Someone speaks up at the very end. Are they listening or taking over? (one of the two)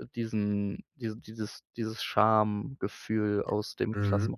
taking over